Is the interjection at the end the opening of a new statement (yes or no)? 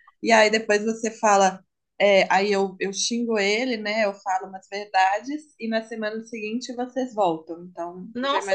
yes